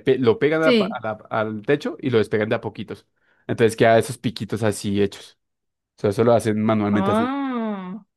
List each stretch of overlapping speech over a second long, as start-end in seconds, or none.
none